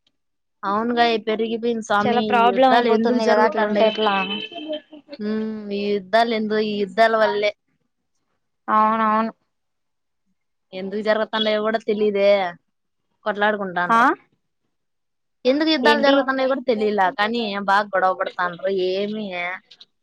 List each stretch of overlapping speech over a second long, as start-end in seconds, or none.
2.0-3.9